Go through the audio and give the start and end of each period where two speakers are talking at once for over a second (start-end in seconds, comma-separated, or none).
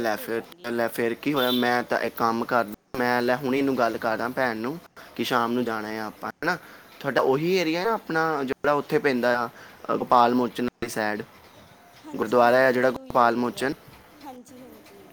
12.2-13.7